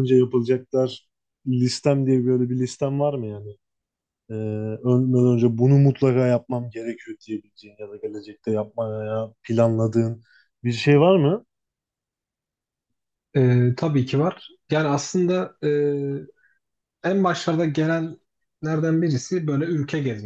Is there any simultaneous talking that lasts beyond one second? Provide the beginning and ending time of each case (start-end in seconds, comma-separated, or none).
none